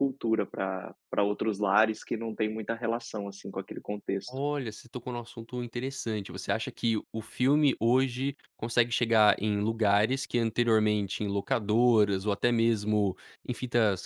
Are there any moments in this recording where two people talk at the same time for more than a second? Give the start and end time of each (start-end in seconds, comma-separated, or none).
none